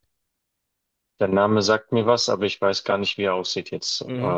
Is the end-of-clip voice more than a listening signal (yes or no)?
yes